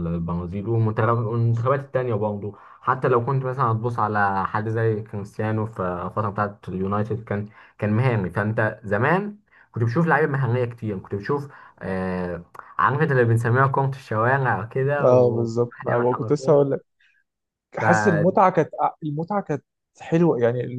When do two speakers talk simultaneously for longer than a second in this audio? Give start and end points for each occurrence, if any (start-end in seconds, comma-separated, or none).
15.0-16.6